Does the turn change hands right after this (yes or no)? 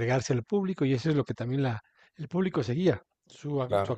no